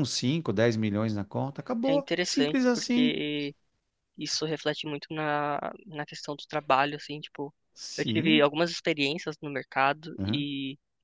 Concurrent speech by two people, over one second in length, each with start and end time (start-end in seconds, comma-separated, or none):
1.9-3.2